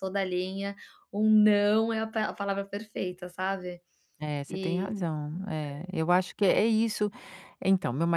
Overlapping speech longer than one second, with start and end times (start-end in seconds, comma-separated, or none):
none